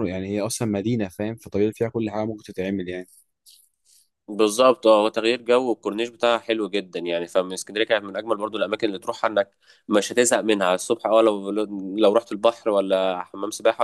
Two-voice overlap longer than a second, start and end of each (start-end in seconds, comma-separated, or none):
none